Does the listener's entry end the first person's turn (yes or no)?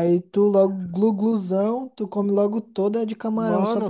yes